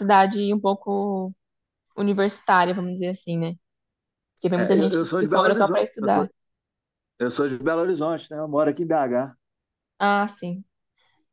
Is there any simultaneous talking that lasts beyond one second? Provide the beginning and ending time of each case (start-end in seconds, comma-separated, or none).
4.6-6.2